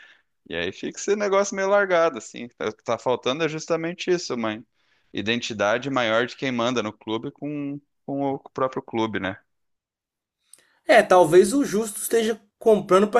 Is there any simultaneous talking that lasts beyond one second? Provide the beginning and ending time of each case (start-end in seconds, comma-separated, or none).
none